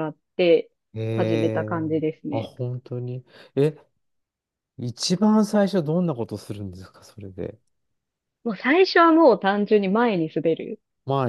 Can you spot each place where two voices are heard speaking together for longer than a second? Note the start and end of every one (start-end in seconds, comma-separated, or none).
none